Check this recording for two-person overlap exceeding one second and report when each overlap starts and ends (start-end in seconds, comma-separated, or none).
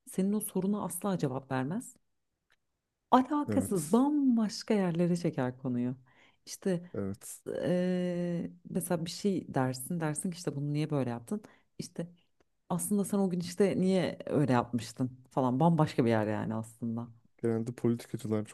none